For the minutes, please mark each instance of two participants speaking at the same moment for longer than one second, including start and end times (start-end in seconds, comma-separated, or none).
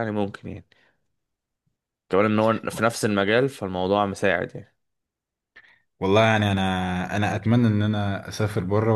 none